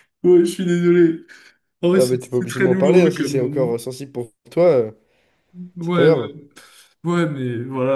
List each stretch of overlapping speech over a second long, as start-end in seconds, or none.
1.9-3.7